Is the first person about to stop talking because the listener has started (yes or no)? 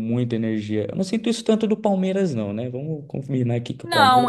yes